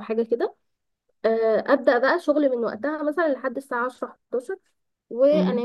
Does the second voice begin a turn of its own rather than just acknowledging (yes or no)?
no